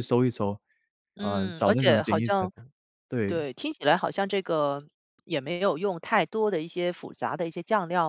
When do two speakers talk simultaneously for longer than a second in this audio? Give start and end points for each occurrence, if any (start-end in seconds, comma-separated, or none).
1.2-2.5